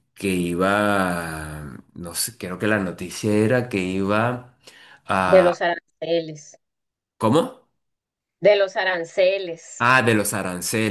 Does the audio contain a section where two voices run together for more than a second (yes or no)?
no